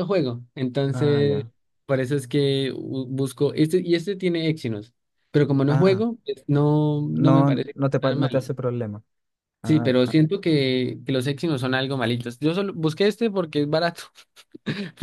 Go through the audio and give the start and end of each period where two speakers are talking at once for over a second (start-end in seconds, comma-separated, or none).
7.1-8.5